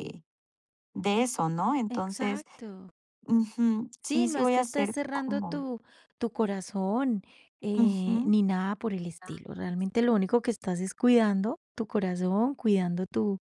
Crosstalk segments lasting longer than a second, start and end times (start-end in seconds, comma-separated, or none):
4.0-5.6